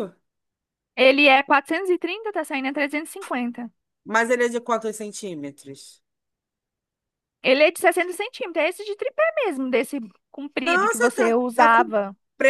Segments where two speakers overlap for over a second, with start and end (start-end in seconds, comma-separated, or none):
10.6-11.8